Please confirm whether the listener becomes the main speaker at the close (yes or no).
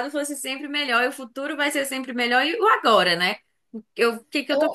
yes